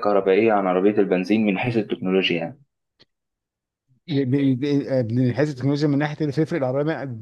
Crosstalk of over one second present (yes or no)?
no